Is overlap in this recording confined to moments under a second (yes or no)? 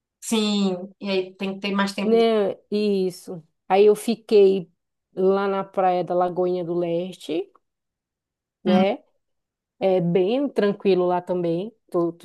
yes